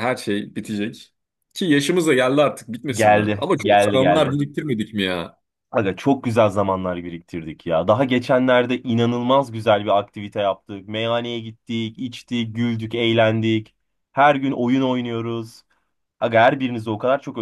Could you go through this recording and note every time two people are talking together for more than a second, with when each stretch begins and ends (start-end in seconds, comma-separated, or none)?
2.9-4.4